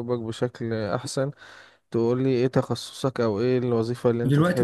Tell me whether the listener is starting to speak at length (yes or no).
yes